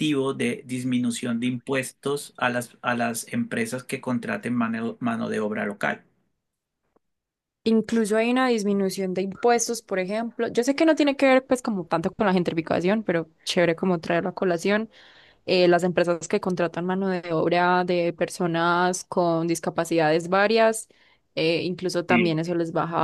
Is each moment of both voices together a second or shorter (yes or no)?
yes